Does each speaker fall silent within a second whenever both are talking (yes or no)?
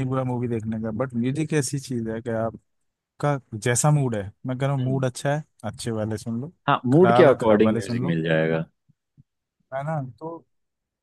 no